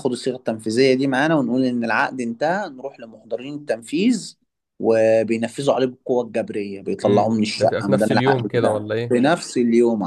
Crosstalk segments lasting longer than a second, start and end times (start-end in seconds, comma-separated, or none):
7.0-9.2